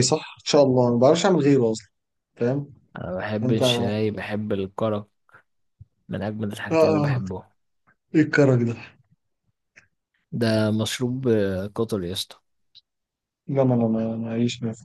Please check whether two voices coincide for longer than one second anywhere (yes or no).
no